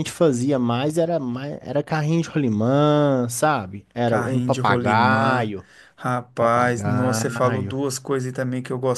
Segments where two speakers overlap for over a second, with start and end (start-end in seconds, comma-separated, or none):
4.0-5.5, 6.4-7.8